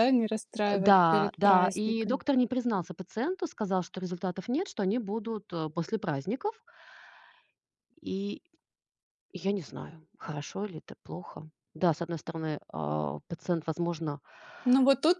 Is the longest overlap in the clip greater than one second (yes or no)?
yes